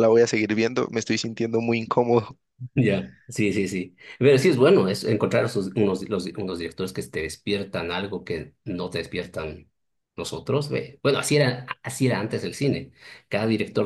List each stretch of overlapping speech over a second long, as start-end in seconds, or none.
none